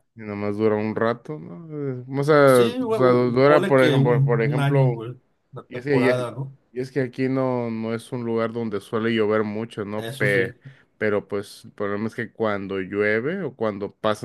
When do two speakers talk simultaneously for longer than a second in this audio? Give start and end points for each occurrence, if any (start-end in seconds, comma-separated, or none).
2.4-5.0